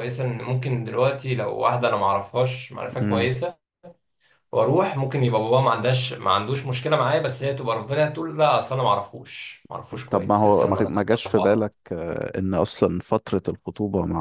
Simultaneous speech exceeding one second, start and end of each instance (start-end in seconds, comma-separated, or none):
10.1-11.7